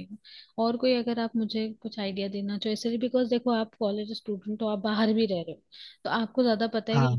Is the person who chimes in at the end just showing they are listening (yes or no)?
yes